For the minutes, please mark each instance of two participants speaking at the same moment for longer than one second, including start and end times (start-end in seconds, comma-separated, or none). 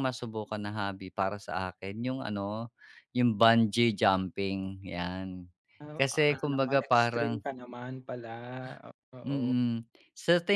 6.0-7.4